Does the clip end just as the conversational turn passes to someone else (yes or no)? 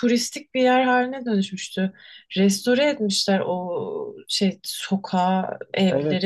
yes